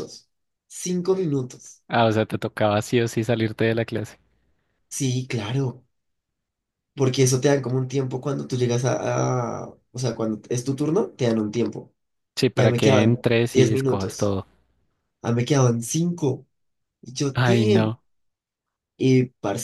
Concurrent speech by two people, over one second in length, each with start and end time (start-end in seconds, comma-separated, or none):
12.6-14.3